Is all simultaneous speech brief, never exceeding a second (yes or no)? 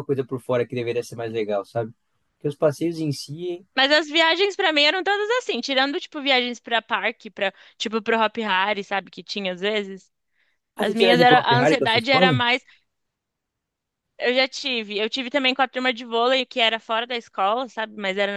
no